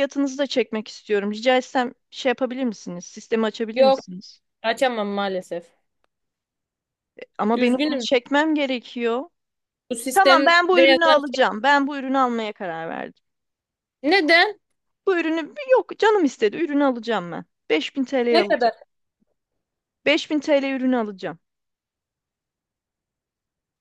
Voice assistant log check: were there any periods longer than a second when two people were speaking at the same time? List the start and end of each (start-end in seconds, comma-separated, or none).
10.1-11.4